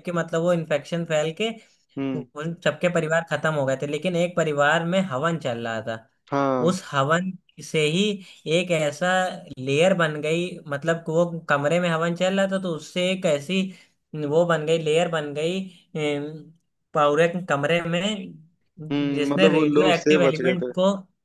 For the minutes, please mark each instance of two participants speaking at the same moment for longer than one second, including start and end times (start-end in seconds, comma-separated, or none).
19.1-20.7